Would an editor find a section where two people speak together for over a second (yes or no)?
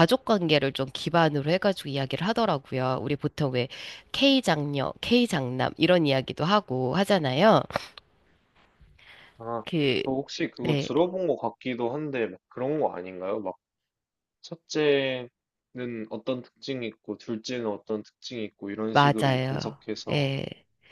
yes